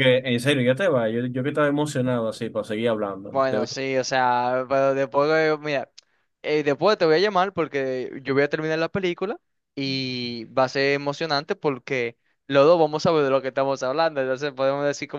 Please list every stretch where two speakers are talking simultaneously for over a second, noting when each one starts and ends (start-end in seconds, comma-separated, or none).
none